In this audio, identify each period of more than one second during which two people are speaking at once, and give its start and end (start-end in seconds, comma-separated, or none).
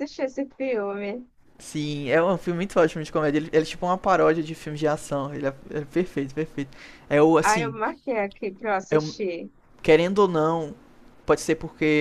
none